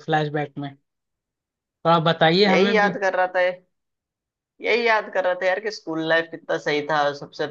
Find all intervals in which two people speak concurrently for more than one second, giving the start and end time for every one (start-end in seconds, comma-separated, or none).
none